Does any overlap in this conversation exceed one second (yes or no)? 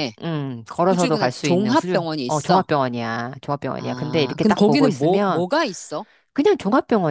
yes